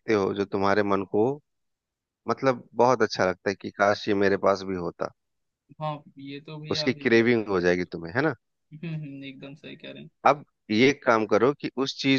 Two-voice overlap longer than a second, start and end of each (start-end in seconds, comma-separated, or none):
6.7-8.1